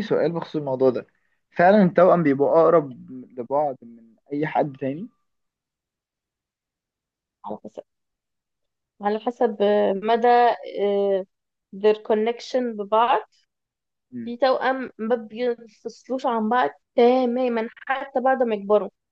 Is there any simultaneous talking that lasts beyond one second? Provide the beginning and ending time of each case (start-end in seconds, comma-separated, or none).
none